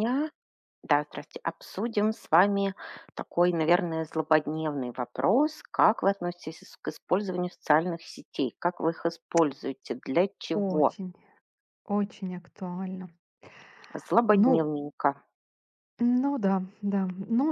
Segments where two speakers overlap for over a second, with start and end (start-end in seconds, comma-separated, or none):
none